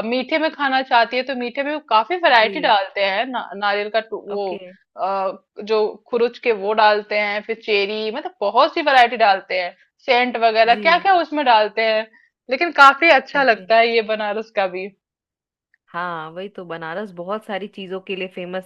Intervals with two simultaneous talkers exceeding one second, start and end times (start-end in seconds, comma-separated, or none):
none